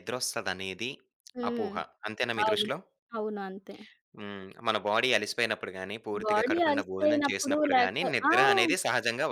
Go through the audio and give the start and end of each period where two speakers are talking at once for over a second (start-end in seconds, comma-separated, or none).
6.2-8.3